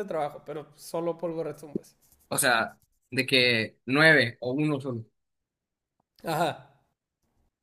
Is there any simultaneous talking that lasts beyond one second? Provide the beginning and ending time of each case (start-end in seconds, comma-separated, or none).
none